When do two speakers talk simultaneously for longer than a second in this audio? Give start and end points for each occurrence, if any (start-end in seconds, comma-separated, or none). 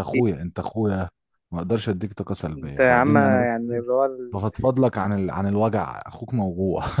2.6-3.8